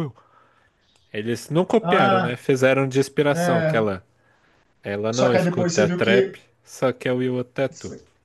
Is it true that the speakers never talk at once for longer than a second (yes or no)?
no